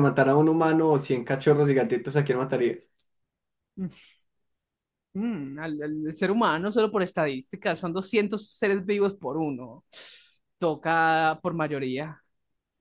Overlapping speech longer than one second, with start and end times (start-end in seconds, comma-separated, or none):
none